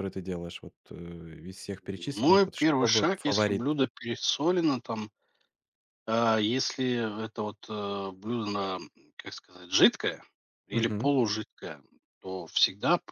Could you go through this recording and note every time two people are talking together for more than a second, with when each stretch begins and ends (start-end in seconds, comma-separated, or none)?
2.2-3.7